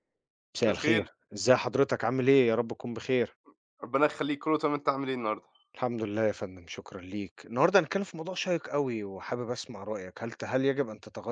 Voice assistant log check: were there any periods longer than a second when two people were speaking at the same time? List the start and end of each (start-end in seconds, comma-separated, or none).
none